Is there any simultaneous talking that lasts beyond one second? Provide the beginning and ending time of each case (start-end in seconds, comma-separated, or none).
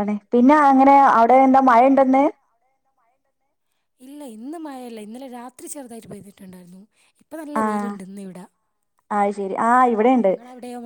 none